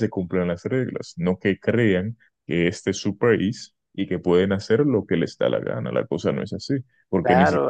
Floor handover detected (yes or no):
yes